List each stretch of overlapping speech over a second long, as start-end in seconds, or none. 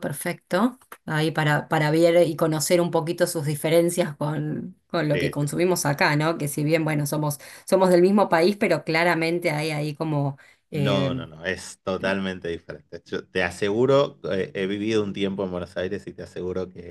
none